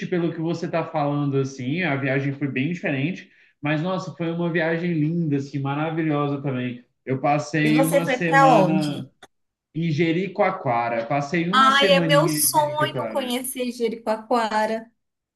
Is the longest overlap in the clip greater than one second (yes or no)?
yes